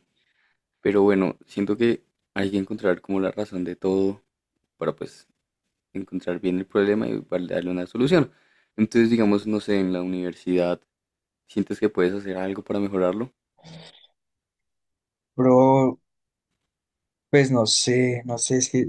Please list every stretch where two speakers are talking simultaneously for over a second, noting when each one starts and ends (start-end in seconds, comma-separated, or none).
none